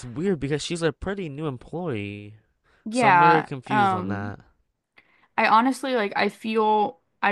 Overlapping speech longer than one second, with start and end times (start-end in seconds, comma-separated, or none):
2.9-4.3